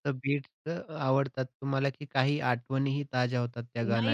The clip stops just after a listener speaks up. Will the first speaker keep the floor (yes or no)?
no